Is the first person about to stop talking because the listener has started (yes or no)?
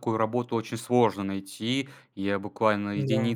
no